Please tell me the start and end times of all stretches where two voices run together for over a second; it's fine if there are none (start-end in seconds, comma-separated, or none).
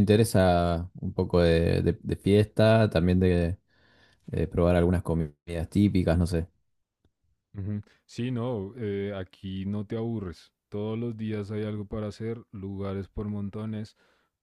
none